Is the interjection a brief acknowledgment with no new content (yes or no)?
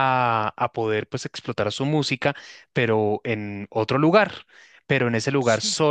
yes